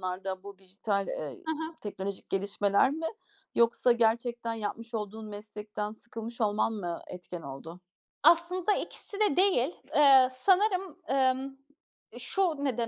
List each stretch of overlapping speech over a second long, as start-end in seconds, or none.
none